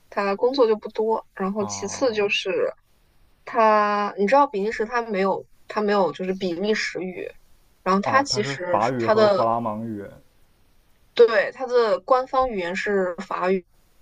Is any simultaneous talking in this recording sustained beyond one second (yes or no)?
yes